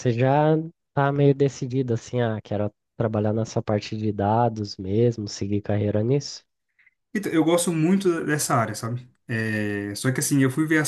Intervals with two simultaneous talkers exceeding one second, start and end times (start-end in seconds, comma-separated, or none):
none